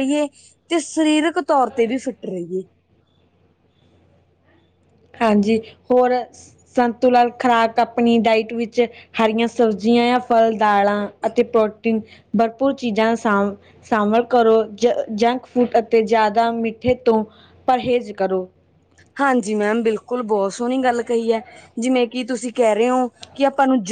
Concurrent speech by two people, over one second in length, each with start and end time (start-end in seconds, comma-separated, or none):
none